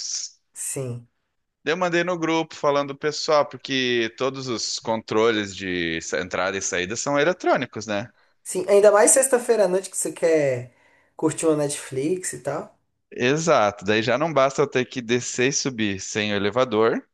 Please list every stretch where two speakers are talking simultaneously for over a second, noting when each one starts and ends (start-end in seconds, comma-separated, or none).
none